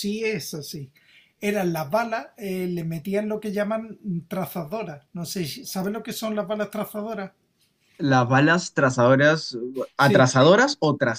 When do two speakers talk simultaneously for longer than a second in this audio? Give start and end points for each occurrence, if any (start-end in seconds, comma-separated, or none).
none